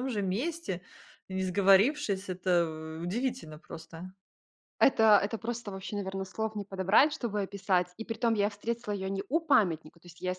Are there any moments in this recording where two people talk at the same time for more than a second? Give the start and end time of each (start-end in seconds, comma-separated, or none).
none